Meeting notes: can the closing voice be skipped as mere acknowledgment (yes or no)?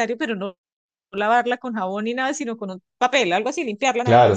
no